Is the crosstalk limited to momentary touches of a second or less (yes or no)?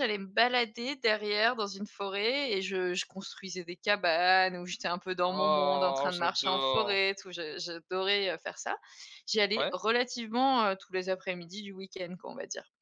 no